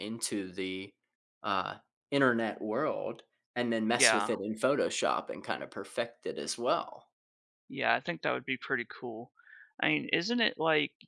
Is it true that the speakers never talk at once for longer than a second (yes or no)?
yes